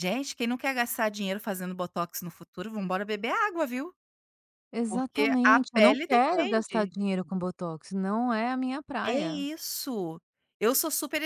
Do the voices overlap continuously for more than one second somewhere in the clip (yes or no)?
yes